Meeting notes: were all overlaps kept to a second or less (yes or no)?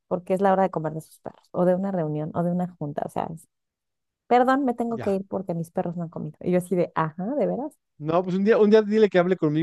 yes